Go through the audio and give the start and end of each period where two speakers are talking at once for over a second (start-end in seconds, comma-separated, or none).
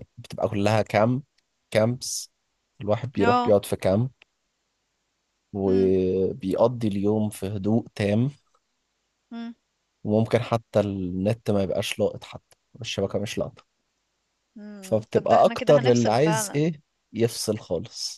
14.8-16.6